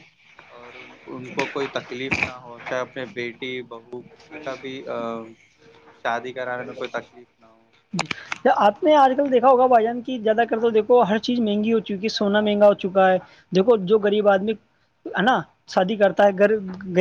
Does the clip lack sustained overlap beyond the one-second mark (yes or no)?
yes